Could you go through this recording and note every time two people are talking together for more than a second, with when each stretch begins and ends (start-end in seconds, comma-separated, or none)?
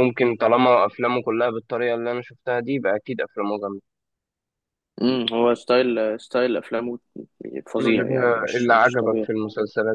7.8-9.3